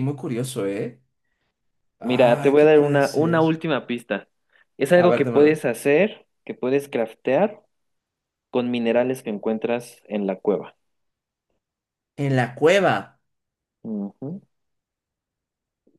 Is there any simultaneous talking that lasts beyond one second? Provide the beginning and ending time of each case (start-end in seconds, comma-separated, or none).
2.0-3.6